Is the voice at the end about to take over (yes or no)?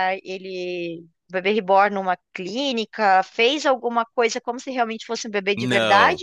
yes